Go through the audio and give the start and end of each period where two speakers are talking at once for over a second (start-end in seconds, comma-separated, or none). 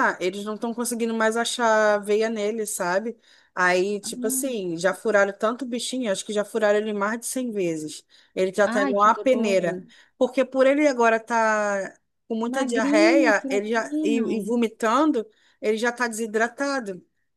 8.6-9.8, 12.5-14.3